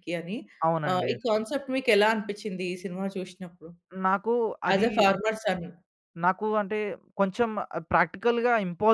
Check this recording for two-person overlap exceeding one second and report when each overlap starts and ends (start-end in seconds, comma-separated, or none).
none